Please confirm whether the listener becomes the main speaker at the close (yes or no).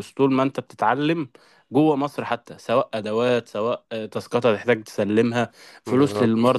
no